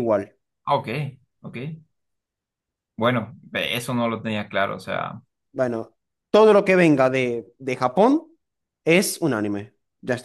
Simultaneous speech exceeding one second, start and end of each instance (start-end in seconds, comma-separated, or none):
none